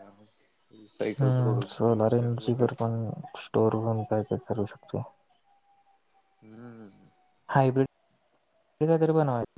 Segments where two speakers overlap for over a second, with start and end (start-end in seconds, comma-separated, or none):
1.2-2.9